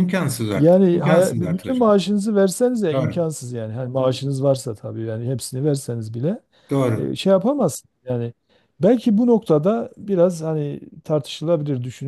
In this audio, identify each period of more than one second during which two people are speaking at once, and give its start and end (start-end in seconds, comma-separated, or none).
0.5-1.9